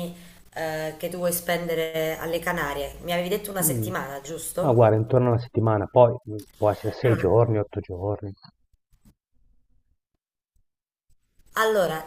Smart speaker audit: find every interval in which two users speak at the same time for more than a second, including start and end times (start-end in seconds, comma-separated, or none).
none